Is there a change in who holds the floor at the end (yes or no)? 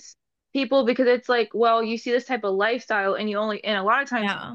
no